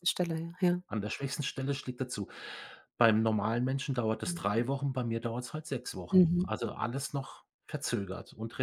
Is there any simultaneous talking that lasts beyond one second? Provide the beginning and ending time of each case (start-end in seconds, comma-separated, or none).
none